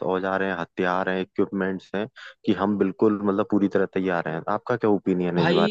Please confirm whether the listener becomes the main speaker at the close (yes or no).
yes